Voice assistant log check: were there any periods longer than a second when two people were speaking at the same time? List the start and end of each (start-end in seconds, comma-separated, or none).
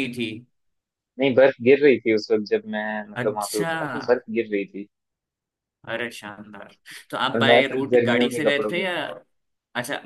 7.3-8.9